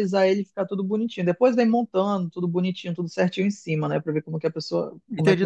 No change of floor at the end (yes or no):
no